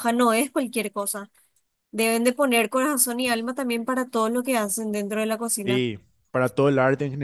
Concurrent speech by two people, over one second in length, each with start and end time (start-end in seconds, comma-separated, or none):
none